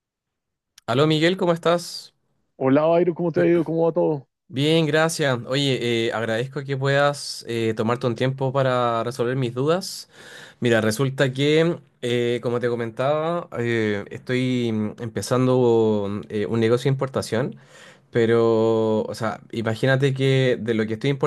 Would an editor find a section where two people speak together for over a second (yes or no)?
no